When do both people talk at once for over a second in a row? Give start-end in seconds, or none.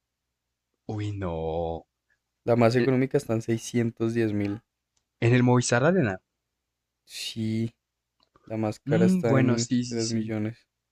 8.8-10.3